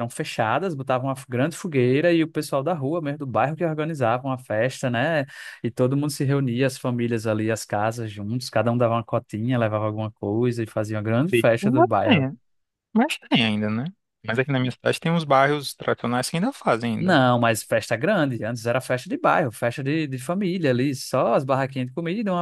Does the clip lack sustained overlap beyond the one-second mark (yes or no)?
yes